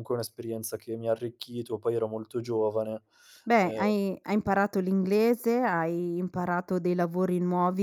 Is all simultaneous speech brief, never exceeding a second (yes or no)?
yes